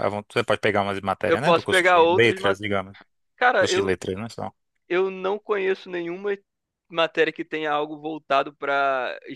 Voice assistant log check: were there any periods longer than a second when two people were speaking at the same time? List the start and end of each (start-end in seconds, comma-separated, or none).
1.2-2.6